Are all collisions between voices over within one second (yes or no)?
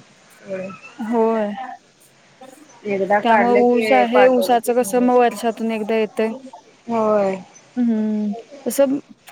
no